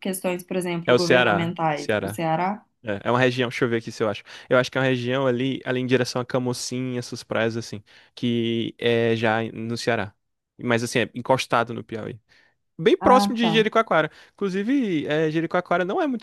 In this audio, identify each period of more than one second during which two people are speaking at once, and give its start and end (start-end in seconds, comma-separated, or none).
0.9-2.2